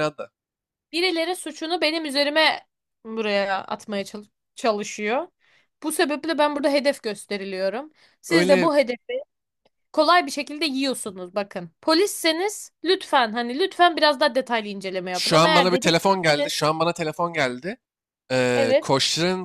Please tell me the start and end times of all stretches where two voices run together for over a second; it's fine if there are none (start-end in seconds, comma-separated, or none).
15.1-16.5